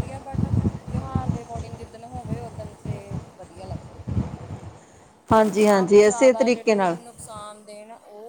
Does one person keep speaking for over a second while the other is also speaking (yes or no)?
yes